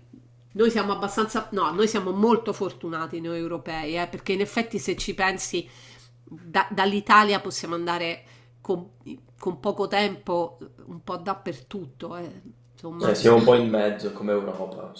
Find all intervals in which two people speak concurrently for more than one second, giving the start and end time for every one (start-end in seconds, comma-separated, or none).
none